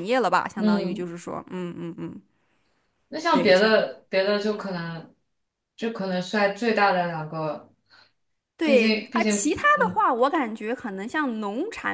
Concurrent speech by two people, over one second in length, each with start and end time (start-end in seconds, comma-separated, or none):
8.6-10.0